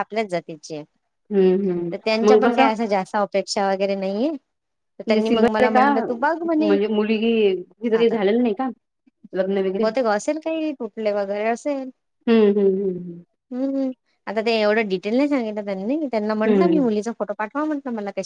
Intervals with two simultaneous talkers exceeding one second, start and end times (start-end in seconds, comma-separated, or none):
none